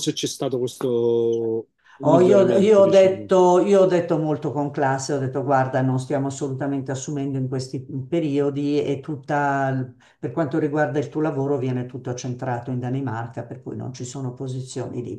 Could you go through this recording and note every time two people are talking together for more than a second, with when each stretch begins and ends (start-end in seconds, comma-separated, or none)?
2.0-3.3